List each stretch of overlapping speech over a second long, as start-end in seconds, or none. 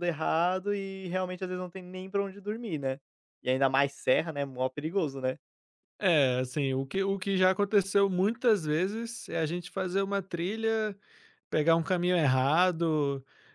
none